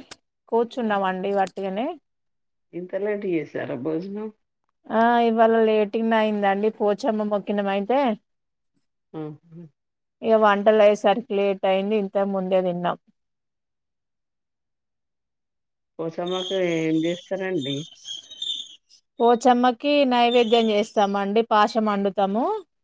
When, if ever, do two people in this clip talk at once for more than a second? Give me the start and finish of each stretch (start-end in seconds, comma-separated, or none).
none